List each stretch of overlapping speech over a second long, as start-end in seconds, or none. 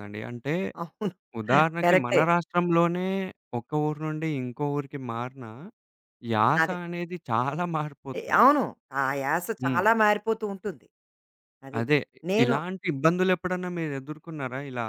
none